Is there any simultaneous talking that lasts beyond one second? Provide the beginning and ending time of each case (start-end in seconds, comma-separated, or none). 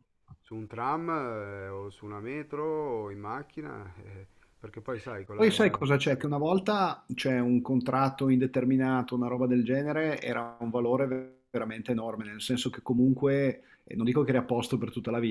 none